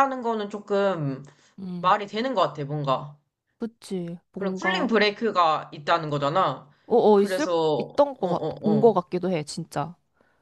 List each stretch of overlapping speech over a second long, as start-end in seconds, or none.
7.2-8.9